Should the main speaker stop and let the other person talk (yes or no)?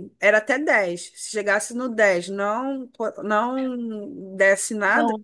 no